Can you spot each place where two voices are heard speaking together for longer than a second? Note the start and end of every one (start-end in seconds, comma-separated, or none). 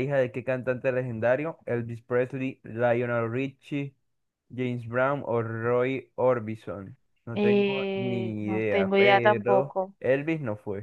7.3-9.9